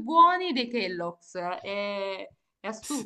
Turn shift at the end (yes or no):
yes